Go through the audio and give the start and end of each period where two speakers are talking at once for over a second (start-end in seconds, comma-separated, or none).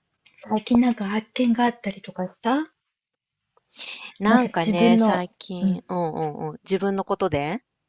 4.3-5.8